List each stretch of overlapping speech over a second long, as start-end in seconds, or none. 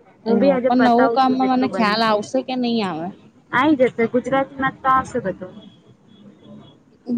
0.7-2.1